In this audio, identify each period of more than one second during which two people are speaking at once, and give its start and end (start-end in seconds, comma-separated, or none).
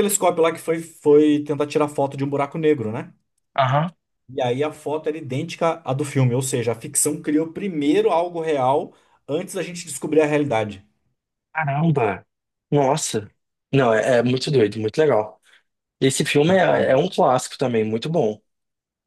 none